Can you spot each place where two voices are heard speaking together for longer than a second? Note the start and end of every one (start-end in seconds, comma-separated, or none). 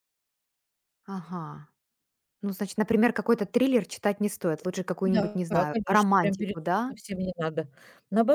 5.0-6.9